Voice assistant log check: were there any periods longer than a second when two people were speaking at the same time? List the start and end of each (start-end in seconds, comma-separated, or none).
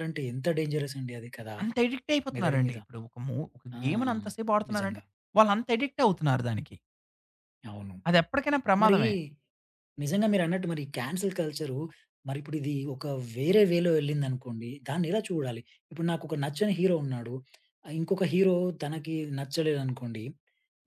none